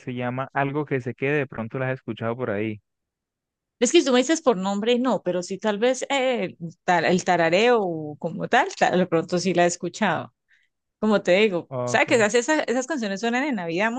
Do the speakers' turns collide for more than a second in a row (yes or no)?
no